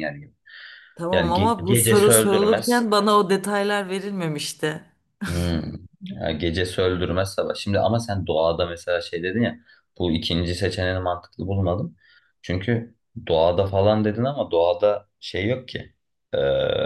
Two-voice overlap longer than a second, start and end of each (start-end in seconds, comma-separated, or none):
1.1-2.9